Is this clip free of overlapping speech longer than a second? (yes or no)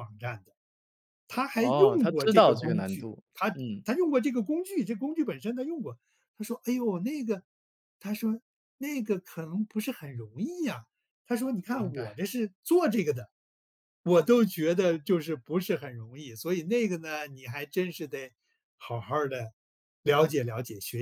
no